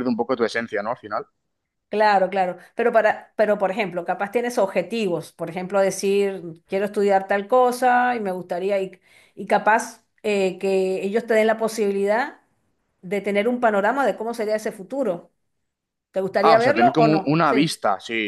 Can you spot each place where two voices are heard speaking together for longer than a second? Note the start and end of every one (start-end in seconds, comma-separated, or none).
16.4-17.8